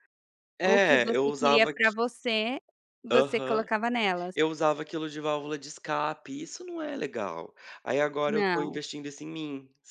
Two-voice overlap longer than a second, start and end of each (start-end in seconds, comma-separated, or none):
0.7-1.9